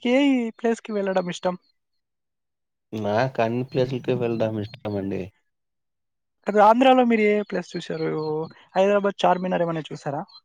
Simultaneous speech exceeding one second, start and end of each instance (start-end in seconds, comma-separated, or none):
none